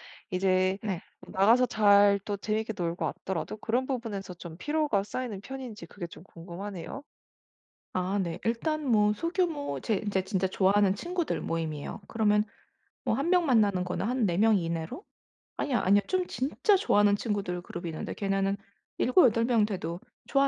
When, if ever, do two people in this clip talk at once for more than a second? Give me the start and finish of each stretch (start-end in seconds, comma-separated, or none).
none